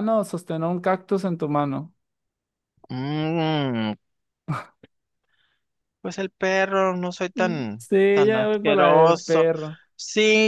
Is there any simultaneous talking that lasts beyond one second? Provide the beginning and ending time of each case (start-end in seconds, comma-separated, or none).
7.3-9.5